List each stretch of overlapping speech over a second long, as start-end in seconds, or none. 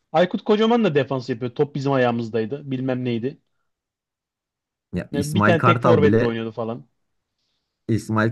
5.1-6.4